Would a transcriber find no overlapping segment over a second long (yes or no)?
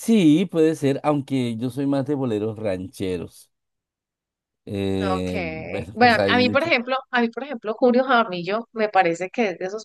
no